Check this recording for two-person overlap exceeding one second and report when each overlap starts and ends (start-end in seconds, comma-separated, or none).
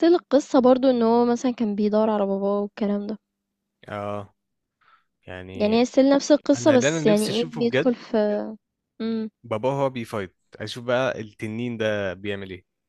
6.6-7.9